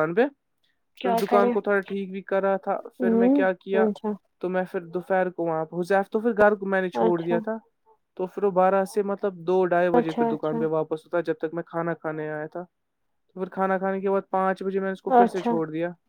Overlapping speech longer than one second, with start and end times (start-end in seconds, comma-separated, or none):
none